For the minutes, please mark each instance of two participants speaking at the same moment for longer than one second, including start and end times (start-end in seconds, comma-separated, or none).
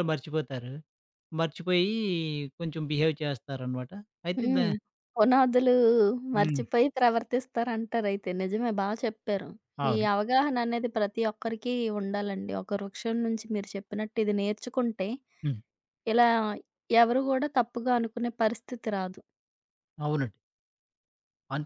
none